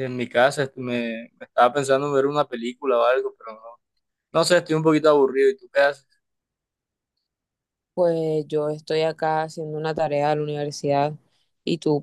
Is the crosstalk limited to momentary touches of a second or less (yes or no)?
yes